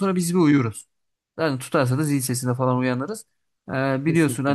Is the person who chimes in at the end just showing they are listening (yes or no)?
yes